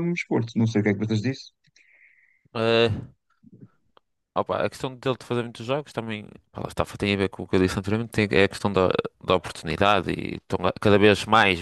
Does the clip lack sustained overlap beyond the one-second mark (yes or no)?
yes